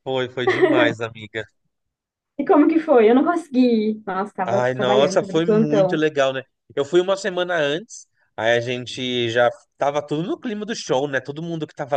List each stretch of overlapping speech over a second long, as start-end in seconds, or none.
4.4-6.0